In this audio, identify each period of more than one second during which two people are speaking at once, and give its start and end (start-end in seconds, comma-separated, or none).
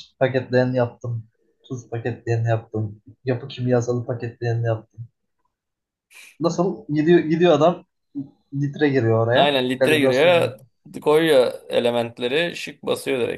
9.3-10.6